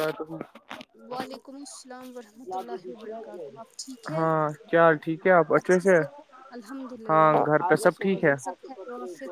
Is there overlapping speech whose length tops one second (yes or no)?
no